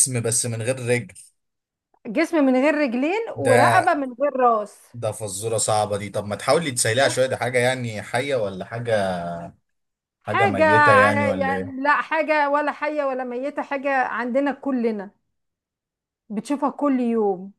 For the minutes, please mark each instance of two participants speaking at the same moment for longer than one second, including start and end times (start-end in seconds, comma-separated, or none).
10.3-11.8